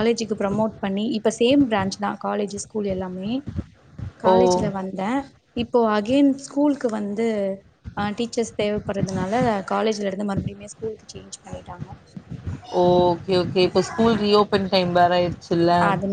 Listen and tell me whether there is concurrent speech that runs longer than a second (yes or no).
no